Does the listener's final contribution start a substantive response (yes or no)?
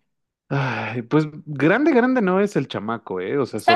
no